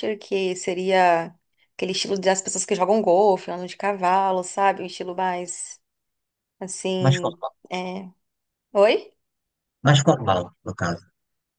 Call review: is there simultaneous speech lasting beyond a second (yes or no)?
no